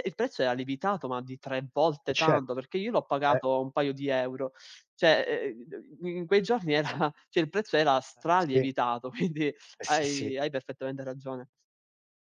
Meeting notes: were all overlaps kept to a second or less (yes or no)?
yes